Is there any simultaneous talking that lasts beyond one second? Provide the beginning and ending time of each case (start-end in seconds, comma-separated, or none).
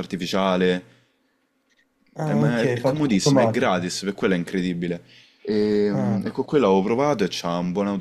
2.2-3.9